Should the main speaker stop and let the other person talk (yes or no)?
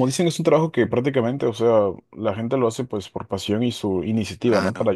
no